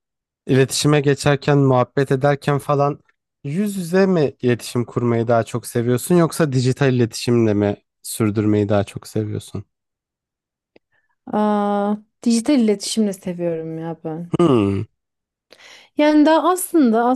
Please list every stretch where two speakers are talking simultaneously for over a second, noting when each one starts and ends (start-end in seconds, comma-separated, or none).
none